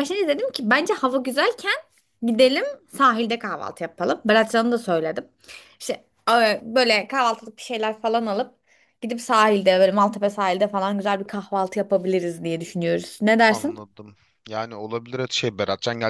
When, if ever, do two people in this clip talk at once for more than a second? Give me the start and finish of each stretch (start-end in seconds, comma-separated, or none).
none